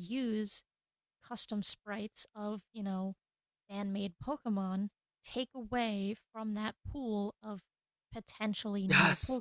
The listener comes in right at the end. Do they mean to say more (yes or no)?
yes